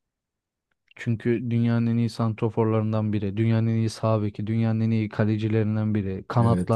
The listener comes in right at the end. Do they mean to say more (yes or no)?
yes